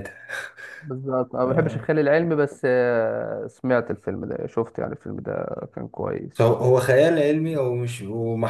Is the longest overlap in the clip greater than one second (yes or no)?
no